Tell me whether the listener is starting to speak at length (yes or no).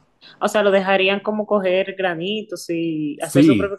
yes